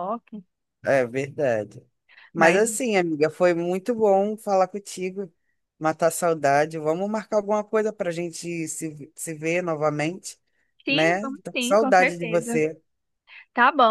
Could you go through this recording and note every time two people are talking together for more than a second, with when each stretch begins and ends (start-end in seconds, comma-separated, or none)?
10.9-12.6